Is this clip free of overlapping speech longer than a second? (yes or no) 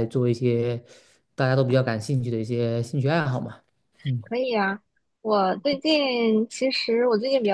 yes